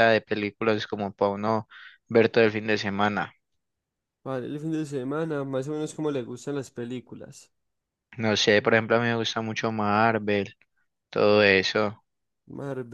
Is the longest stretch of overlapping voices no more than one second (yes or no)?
yes